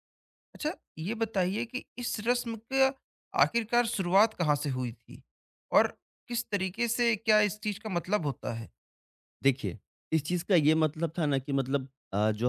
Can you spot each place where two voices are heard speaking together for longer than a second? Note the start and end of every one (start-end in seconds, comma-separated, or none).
none